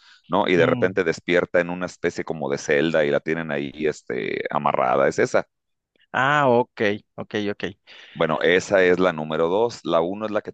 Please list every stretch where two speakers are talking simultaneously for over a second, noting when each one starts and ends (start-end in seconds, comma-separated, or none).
none